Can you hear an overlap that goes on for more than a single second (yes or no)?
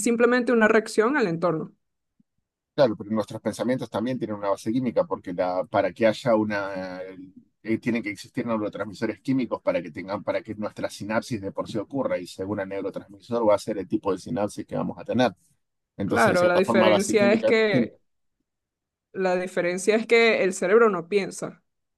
yes